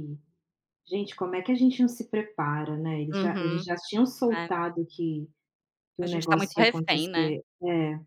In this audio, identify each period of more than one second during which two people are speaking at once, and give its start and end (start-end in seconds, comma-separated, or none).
6.0-7.4